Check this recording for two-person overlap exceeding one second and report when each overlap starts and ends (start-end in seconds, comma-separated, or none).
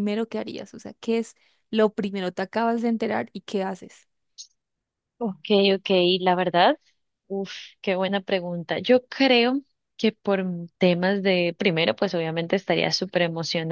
none